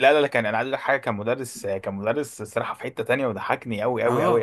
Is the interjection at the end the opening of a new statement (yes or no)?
yes